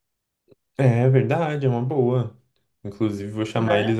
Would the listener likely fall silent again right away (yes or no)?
yes